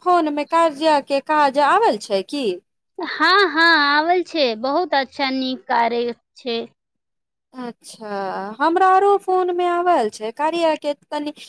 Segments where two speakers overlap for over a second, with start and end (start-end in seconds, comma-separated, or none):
none